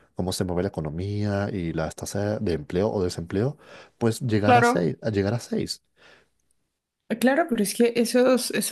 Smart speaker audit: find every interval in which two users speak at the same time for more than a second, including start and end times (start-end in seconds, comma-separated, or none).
none